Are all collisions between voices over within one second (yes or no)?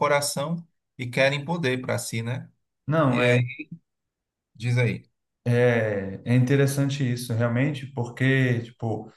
yes